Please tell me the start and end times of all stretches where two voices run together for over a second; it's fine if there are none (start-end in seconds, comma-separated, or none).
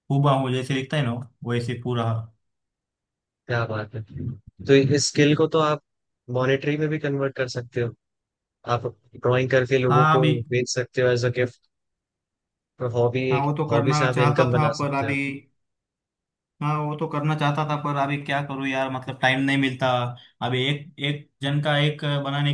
13.3-15.2